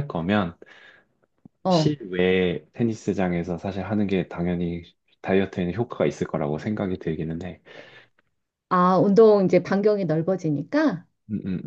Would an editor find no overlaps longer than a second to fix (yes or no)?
yes